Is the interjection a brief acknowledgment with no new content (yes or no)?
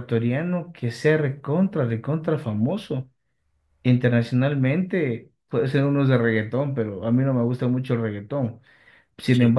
yes